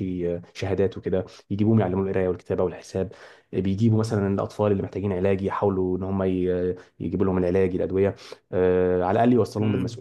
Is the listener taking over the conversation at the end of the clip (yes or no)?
yes